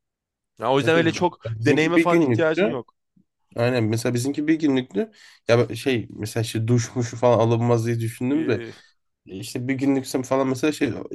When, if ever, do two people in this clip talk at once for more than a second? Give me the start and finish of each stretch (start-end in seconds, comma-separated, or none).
0.8-2.8